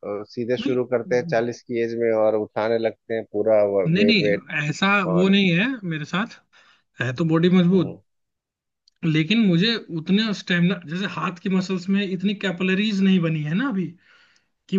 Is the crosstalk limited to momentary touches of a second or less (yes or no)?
yes